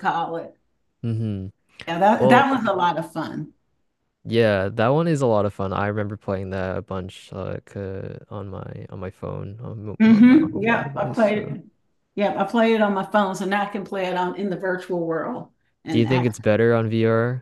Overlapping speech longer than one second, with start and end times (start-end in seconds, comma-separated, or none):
10.0-11.6